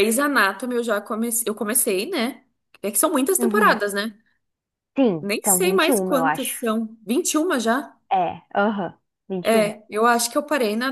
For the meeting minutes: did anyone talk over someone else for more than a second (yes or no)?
yes